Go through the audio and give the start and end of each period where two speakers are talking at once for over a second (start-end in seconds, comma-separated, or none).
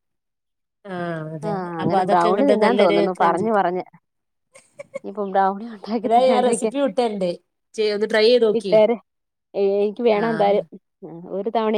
1.5-3.5